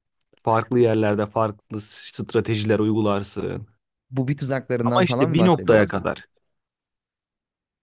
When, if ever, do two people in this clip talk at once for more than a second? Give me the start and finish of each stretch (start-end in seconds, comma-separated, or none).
4.8-6.0